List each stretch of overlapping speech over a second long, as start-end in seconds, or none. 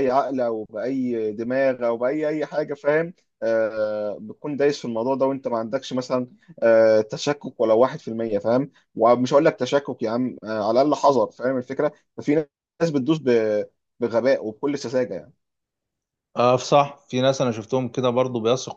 none